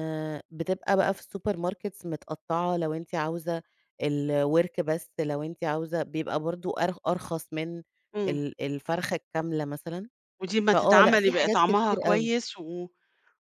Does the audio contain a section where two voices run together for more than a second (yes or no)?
yes